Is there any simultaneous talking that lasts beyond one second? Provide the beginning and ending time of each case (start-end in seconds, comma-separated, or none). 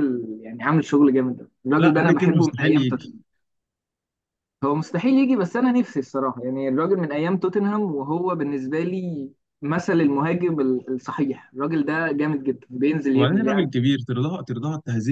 1.8-3.1